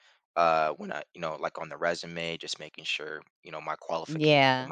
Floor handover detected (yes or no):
yes